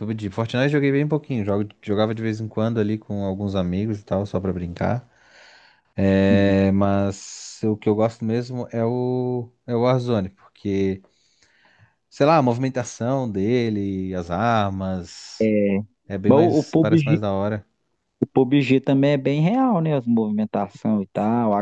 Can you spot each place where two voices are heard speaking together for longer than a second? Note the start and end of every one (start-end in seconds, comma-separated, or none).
16.3-17.6